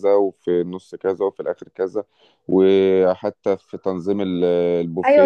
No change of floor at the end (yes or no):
no